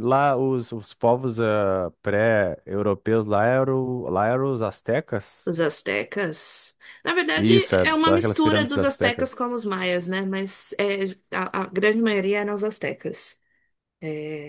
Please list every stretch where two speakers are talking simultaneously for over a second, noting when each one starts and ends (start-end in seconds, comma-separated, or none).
7.3-9.3